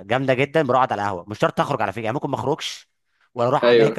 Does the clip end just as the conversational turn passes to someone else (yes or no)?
no